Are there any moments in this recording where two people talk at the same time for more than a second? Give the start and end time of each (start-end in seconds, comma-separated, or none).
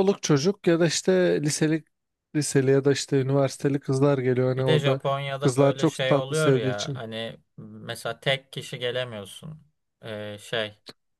4.5-7.0